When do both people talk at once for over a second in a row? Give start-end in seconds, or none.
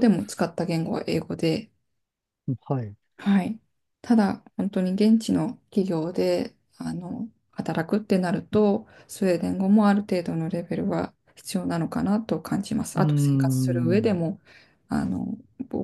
13.0-14.2